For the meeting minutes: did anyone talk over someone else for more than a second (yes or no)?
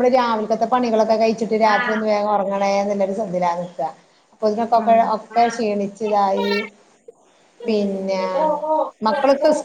yes